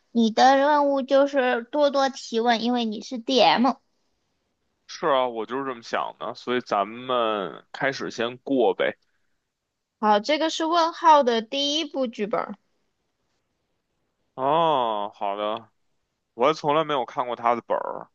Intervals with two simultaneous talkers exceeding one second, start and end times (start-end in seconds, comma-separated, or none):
none